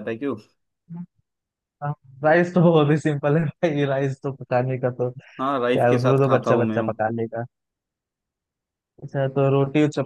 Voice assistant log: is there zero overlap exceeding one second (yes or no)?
no